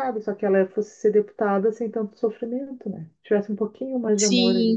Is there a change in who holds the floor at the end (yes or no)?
yes